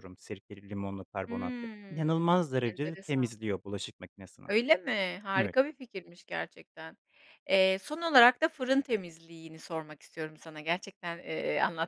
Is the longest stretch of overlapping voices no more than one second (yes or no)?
no